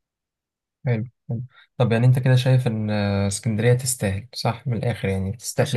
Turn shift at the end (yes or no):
yes